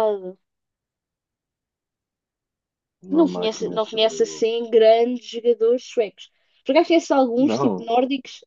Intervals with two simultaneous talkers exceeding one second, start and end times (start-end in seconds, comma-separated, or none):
3.1-4.7